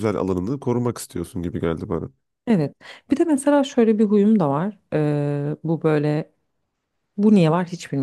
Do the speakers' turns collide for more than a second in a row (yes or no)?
no